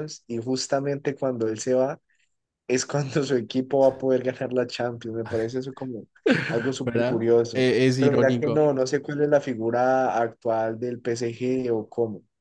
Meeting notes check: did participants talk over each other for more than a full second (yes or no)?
yes